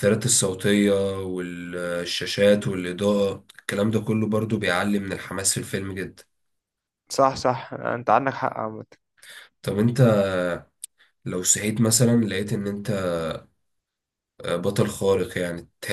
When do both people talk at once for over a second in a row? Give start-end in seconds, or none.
none